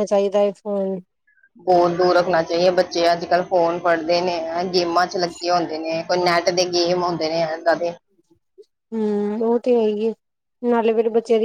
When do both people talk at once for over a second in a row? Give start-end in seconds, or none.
none